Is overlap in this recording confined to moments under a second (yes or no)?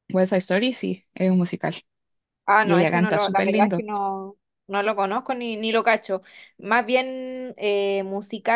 no